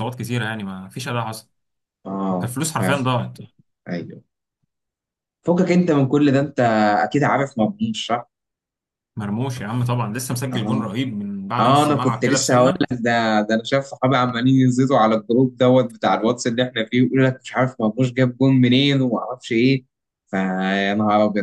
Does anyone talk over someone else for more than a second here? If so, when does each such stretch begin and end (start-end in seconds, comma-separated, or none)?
11.6-12.8